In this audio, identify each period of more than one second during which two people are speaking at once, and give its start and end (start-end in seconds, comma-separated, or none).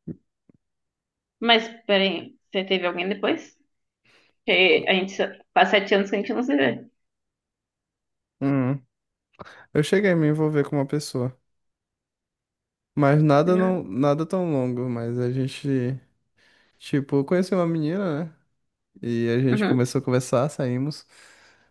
none